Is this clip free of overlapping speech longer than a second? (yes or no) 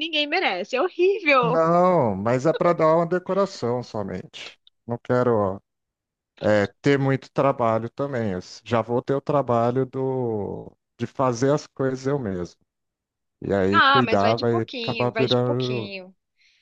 no